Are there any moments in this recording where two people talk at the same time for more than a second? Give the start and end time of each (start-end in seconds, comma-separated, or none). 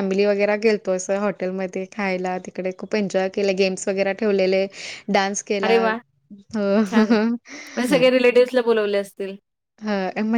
none